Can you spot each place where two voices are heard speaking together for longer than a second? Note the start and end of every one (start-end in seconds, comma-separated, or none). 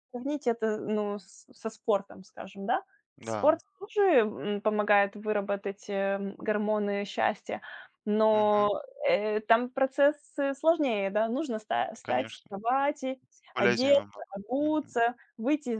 13.5-14.9